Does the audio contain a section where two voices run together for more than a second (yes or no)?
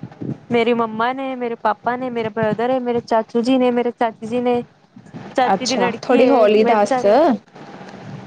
yes